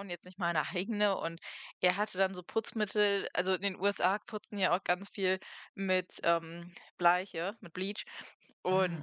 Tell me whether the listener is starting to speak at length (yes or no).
no